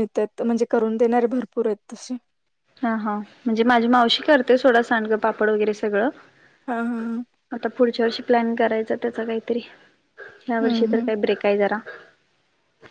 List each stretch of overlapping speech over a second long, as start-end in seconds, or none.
none